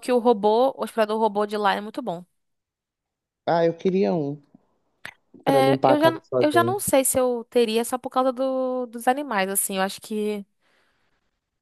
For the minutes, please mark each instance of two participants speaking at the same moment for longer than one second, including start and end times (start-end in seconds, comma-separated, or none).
5.5-6.8